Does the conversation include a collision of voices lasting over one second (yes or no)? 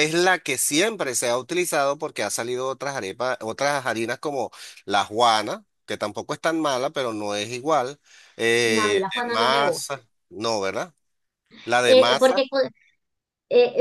yes